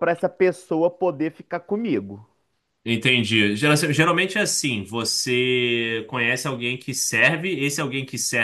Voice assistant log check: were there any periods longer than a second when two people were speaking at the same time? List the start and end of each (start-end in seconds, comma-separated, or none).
none